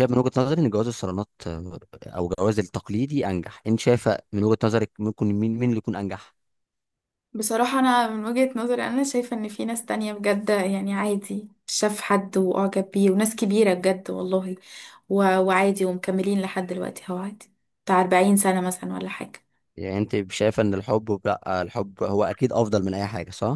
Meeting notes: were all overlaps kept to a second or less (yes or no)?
yes